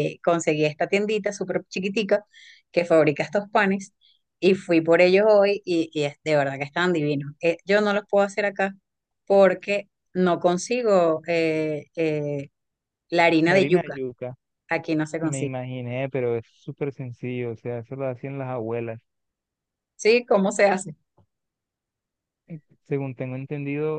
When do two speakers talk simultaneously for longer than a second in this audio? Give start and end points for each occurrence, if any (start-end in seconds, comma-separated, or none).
none